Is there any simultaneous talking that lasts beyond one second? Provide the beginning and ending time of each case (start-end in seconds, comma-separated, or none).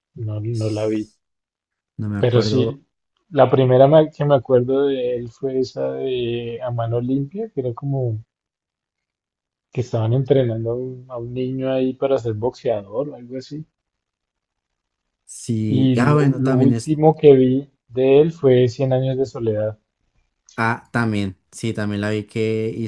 15.7-17.0